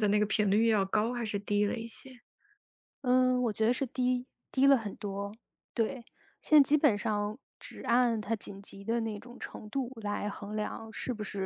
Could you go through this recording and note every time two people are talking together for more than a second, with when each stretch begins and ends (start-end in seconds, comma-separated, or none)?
none